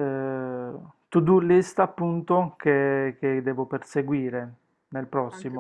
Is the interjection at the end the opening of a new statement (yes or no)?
yes